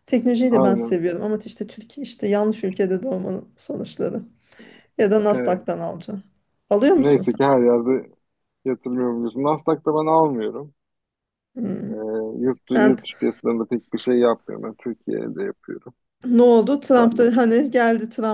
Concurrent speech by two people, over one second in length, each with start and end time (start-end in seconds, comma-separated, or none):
none